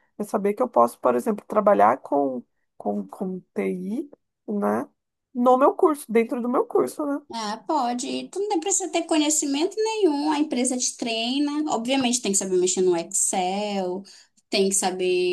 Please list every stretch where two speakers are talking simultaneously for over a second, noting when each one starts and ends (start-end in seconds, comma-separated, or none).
none